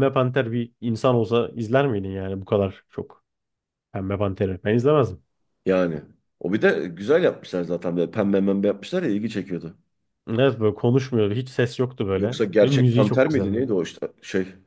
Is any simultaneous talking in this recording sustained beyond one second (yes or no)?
yes